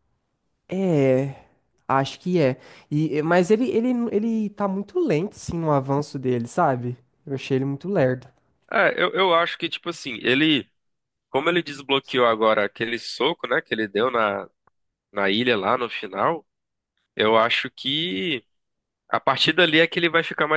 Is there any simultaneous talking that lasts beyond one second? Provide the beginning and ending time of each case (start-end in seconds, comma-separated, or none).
none